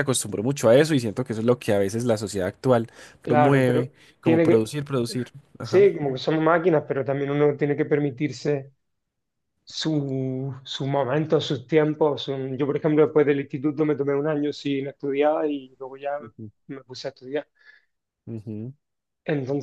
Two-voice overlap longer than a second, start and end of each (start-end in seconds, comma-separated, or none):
3.2-4.8